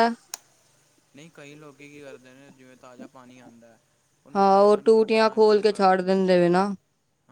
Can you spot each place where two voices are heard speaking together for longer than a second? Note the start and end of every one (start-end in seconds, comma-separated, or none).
4.4-6.0